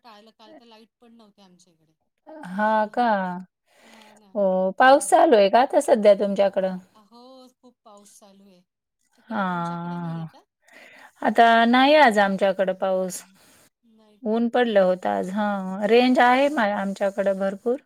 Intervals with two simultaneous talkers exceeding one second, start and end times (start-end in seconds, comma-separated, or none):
none